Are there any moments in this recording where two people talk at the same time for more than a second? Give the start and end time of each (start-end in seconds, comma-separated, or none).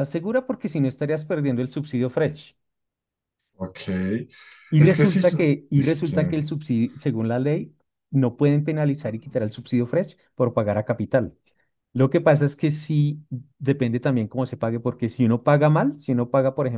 4.8-6.3